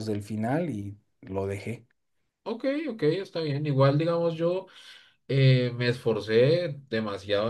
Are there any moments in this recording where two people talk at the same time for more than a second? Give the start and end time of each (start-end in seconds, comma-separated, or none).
none